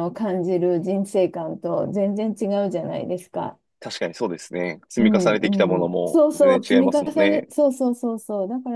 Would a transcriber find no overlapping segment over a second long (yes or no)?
no